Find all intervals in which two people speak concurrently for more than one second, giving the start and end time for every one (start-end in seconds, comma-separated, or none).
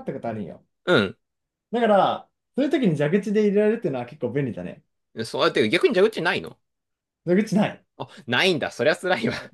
none